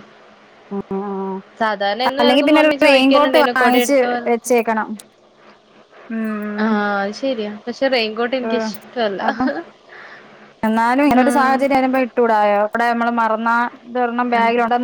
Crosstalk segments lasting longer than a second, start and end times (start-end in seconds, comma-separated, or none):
2.2-4.5